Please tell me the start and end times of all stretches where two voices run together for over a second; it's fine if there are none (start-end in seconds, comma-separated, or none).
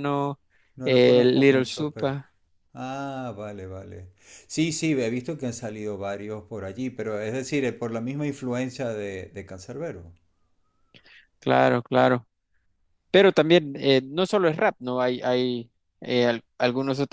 0.8-2.2